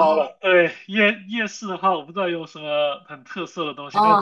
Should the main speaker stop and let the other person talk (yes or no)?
yes